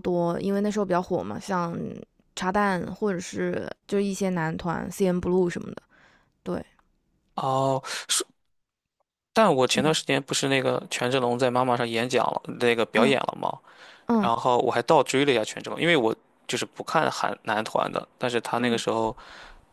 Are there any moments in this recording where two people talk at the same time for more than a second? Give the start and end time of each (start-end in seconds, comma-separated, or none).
none